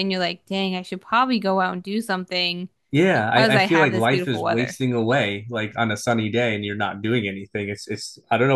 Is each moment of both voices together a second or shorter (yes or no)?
no